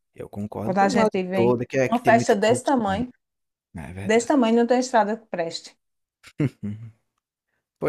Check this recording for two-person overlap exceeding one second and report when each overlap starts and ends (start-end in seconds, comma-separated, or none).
0.6-3.0